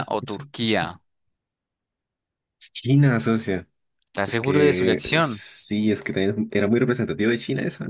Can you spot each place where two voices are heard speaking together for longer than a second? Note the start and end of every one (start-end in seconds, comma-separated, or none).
4.2-5.4